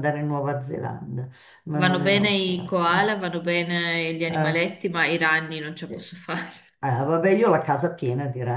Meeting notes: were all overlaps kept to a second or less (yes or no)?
no